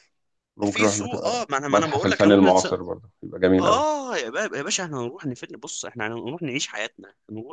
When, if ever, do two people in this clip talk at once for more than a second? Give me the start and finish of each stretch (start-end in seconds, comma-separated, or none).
0.7-2.7